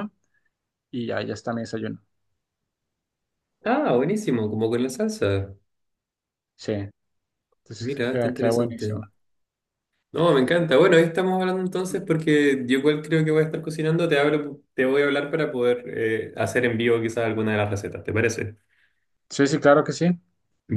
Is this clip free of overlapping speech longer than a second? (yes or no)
no